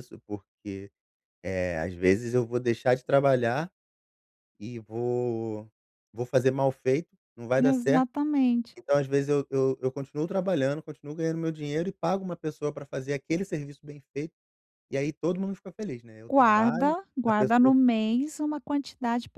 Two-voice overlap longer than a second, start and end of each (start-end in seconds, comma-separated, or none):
16.3-17.7